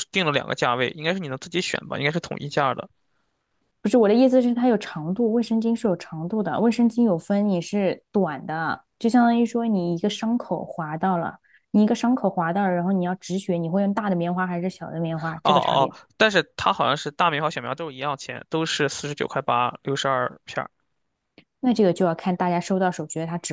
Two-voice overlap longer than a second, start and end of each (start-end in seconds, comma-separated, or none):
none